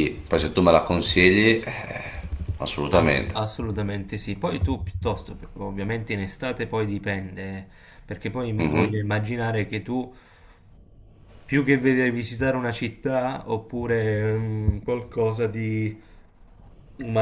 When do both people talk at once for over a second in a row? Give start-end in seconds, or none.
none